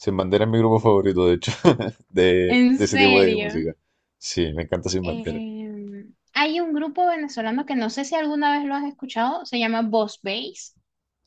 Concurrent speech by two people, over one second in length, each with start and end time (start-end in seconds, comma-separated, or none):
2.5-3.6